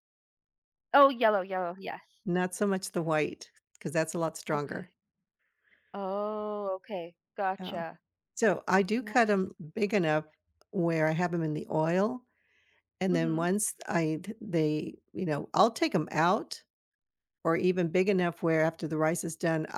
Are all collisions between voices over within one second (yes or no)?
yes